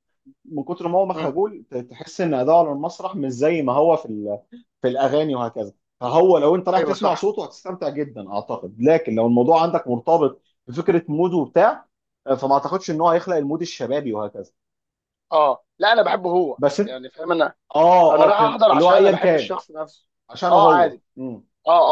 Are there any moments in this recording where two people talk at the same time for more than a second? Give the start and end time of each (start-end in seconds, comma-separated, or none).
18.1-19.6